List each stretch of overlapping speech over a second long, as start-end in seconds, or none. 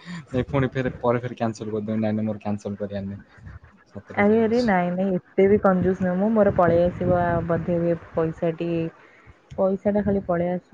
none